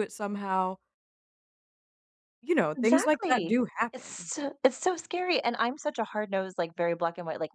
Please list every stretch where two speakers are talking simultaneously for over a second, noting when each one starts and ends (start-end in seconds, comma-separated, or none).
2.8-4.3